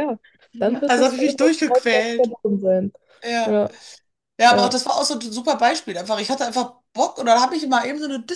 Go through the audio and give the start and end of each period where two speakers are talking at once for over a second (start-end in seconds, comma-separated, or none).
0.9-2.3